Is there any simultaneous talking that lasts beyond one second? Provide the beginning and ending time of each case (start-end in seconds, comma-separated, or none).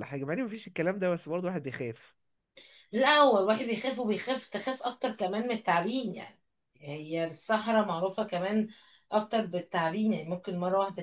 none